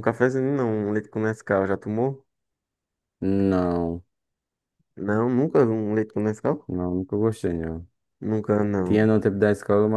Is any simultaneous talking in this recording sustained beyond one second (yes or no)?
no